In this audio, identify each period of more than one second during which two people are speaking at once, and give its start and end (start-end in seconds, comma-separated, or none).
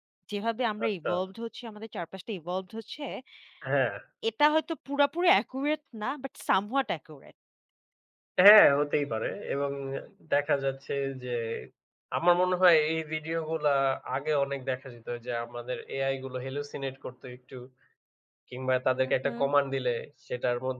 none